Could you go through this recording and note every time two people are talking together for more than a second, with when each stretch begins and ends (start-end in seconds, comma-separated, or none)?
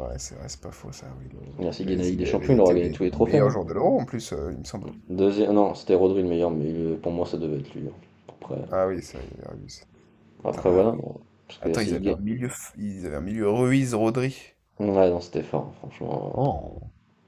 1.6-3.5